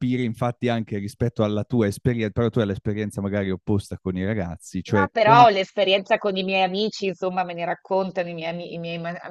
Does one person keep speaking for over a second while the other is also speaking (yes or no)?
no